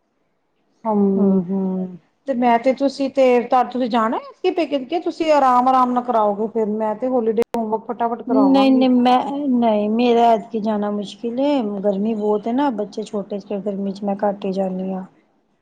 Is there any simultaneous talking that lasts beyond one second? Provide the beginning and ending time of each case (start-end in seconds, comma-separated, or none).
none